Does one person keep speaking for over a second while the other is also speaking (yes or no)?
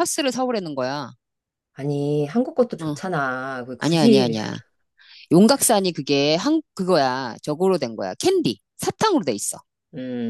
no